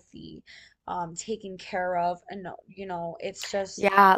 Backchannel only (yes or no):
no